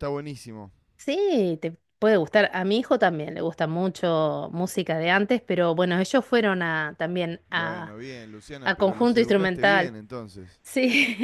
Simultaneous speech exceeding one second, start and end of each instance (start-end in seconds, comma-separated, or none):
8.6-9.9